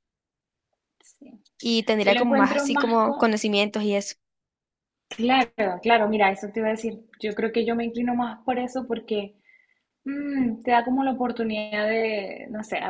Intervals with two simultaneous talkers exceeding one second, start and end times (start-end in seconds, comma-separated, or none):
2.0-3.3